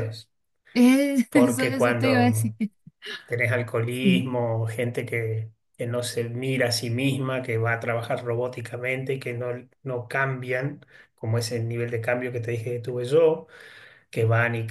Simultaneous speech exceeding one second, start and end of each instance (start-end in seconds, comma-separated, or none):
1.3-2.5